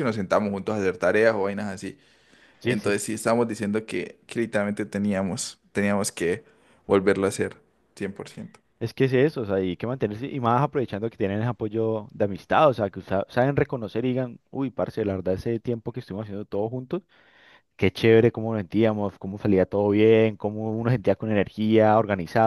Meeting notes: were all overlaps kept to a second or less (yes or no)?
yes